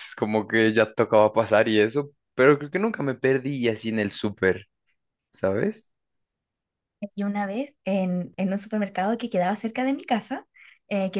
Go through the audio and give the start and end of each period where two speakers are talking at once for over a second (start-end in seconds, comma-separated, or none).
none